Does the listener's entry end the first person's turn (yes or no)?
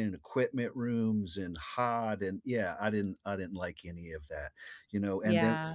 no